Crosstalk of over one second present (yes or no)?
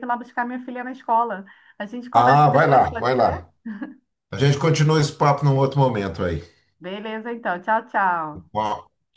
yes